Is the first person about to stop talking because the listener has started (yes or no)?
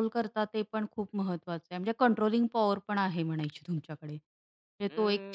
yes